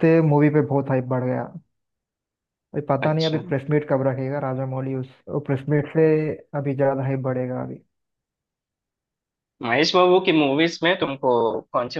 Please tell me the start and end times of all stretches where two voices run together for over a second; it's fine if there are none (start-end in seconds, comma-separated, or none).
none